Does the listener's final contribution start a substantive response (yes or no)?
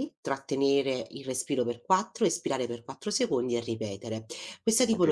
yes